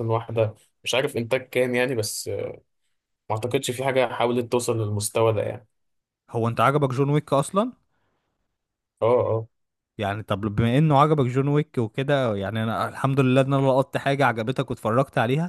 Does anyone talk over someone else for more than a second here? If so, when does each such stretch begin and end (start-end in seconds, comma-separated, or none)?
none